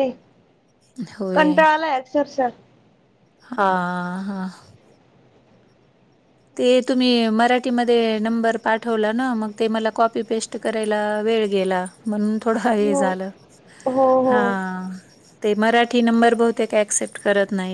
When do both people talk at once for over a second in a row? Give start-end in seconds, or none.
none